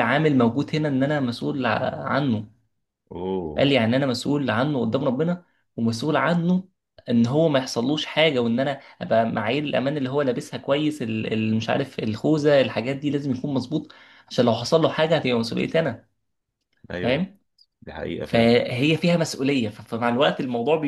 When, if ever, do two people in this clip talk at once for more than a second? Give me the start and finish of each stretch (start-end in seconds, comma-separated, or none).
none